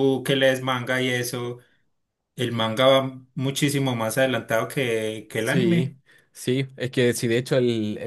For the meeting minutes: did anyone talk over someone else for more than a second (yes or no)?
no